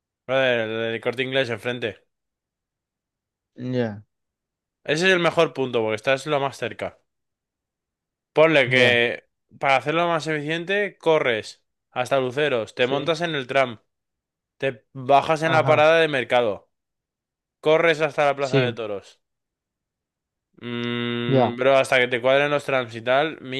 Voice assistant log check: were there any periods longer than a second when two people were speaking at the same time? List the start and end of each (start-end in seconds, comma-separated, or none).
none